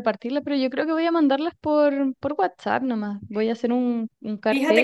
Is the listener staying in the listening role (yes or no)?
no